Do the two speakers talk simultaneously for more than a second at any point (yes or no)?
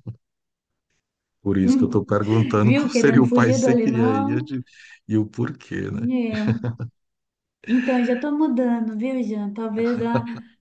yes